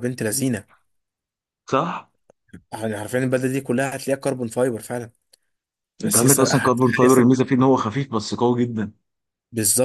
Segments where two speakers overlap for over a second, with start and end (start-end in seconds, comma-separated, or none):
6.0-7.3